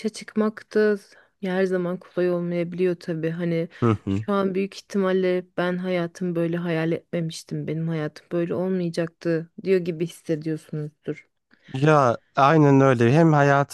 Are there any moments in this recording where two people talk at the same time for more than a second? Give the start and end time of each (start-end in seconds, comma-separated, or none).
none